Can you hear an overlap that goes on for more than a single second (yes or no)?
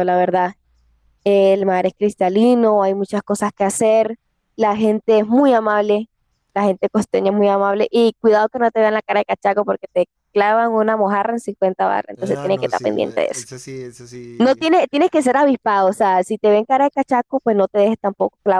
yes